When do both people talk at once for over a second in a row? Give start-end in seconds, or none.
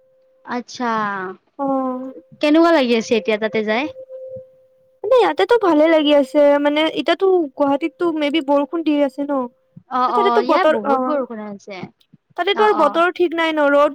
10.2-11.8